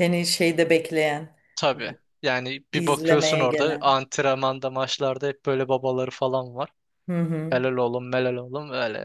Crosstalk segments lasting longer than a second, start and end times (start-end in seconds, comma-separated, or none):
2.7-3.9